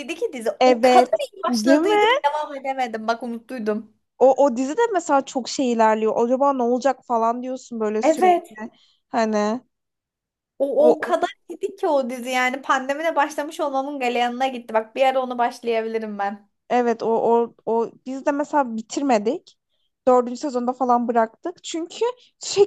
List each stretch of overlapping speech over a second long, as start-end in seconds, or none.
0.6-2.2